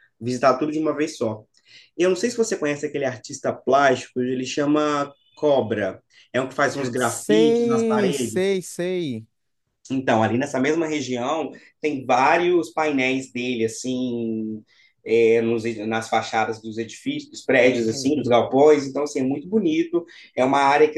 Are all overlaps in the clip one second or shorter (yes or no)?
no